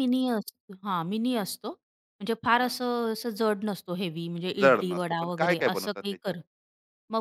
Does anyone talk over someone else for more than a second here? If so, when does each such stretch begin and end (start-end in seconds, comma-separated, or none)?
4.6-6.3